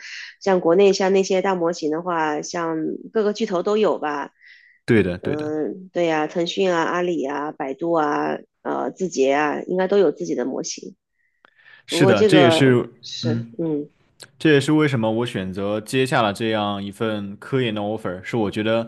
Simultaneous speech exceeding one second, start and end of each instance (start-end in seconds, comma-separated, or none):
11.9-13.6